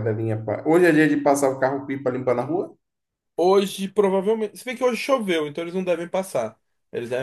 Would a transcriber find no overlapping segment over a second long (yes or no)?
yes